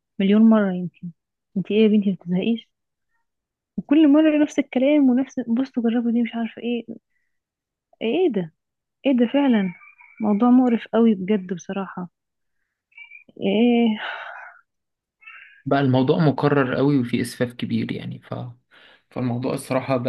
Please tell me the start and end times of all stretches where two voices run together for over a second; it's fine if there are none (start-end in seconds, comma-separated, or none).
none